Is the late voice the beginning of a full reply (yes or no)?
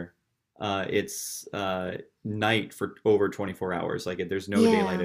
yes